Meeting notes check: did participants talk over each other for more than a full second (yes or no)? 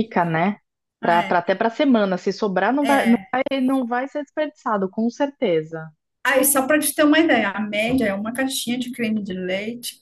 no